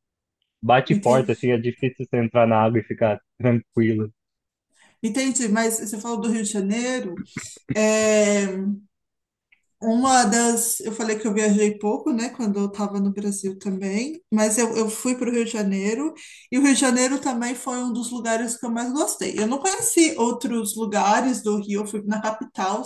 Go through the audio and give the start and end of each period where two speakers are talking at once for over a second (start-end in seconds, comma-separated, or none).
none